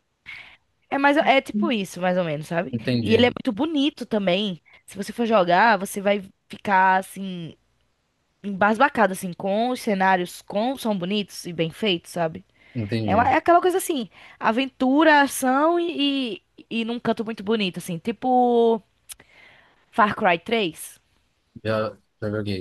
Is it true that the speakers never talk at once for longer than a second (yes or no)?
yes